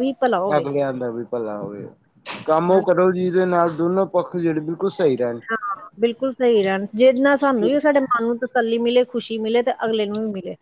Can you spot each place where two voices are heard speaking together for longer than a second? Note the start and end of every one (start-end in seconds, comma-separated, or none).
none